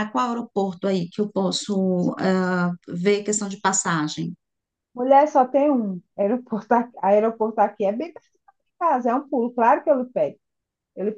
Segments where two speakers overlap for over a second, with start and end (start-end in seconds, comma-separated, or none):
none